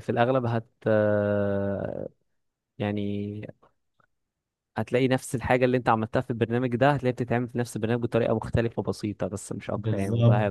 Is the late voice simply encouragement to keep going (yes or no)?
no